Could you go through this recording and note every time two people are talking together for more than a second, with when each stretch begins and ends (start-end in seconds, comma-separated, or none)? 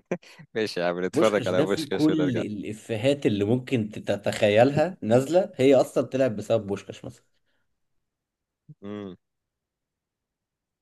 1.1-2.4